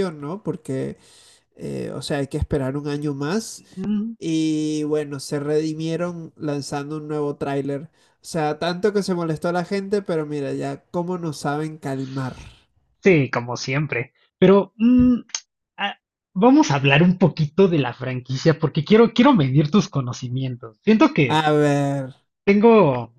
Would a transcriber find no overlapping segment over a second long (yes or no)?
yes